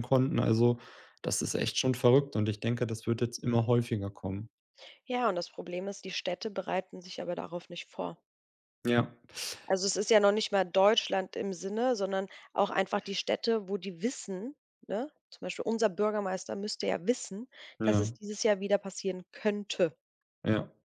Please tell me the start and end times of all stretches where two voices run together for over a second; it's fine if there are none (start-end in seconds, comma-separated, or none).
none